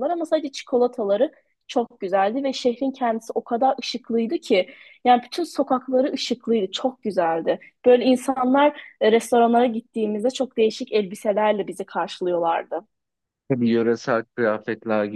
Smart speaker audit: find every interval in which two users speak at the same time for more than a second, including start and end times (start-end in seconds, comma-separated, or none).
none